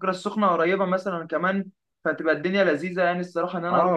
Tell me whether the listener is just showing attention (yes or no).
no